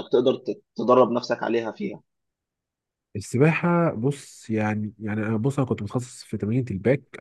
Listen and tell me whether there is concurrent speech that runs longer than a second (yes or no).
no